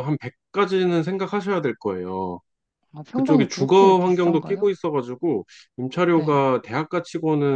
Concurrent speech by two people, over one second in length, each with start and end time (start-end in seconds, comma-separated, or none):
3.1-4.7